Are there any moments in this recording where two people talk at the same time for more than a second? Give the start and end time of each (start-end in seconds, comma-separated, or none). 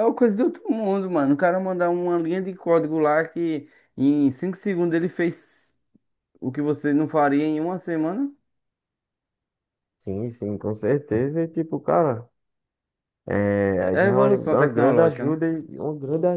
13.8-15.4